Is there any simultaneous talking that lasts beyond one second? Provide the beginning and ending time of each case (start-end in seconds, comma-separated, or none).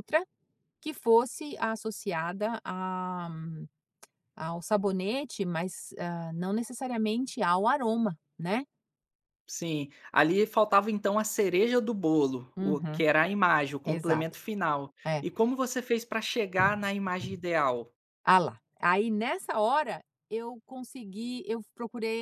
none